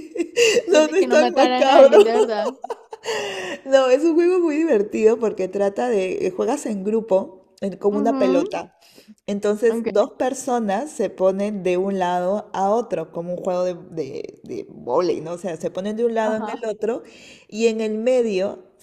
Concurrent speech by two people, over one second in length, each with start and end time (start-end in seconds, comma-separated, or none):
0.7-1.9